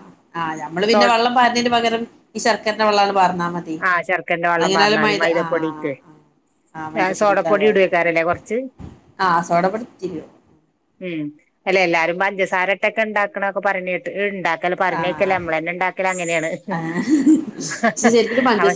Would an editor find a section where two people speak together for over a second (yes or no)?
yes